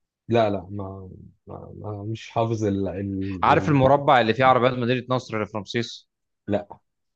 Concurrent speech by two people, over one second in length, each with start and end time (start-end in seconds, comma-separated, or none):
none